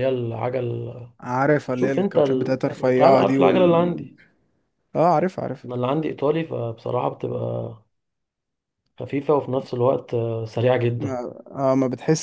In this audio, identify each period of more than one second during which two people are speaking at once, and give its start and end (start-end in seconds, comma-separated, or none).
1.7-3.9